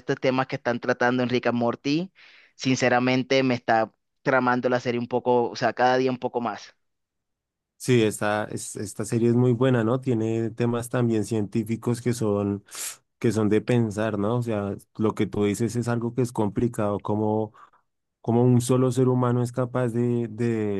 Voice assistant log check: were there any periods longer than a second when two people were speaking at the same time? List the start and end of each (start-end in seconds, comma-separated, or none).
none